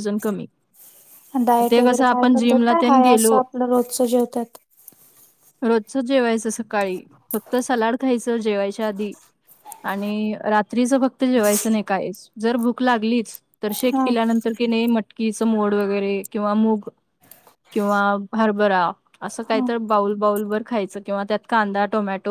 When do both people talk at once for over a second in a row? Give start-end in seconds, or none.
1.7-3.3